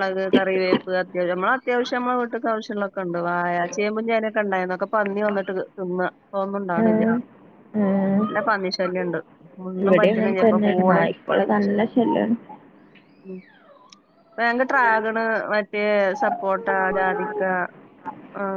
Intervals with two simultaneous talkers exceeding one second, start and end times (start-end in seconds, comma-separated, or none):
none